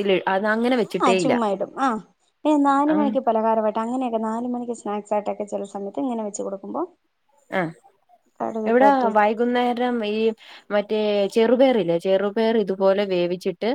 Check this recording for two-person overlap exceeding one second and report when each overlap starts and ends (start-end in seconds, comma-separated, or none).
none